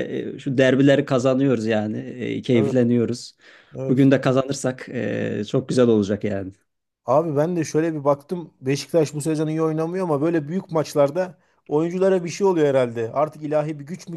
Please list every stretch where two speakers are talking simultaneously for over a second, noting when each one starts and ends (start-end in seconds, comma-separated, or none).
none